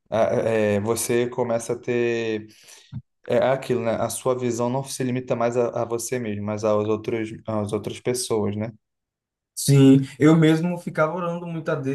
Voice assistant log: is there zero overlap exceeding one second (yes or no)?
yes